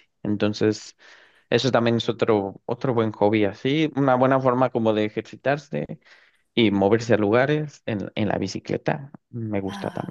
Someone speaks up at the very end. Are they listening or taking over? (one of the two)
taking over